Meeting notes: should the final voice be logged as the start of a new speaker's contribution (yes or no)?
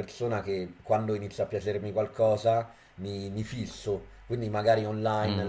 no